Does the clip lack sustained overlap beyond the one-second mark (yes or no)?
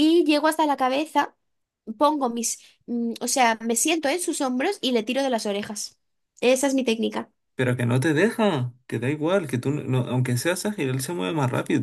yes